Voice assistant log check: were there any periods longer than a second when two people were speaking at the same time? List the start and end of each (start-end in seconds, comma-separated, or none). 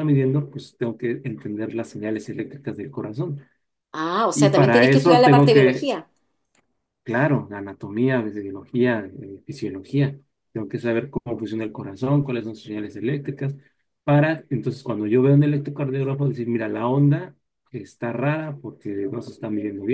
4.3-5.9